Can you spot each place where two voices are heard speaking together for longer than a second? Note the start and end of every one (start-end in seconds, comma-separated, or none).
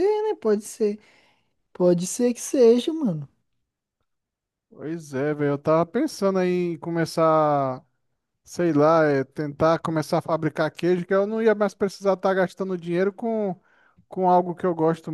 none